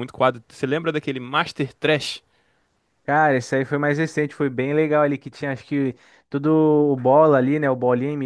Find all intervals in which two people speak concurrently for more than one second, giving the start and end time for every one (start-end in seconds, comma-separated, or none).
none